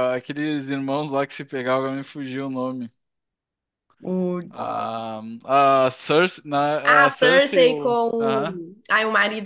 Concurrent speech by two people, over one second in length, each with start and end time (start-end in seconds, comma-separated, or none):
6.9-8.6